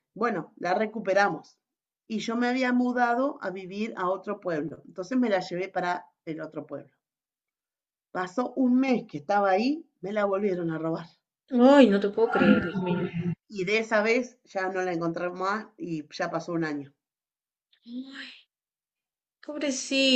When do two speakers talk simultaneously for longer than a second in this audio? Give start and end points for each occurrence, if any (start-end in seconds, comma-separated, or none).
none